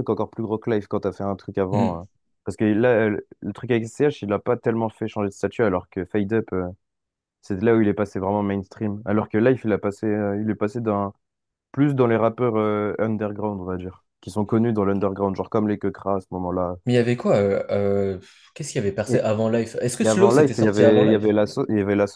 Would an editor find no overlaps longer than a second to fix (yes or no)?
no